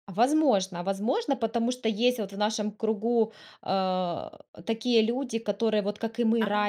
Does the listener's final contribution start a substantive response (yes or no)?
no